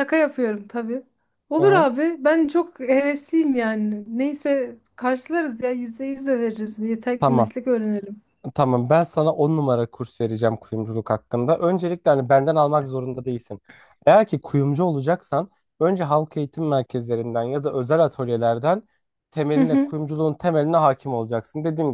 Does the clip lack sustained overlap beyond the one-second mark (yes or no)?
yes